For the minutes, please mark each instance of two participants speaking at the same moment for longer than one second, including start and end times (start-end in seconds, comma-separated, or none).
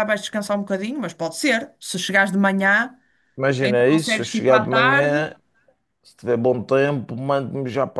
3.6-5.2